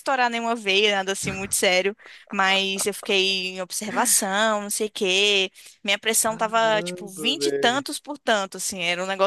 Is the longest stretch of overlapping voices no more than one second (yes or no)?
no